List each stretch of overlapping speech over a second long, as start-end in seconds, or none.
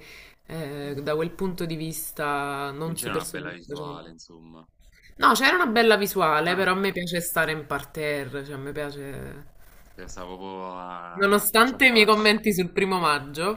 2.8-4.2, 11.1-12.3